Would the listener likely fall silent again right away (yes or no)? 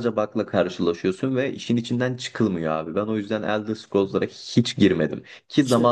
yes